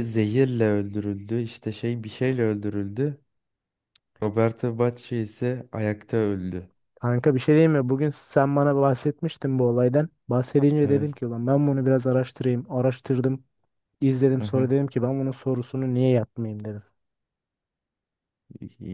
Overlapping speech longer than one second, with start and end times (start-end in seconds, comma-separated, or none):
none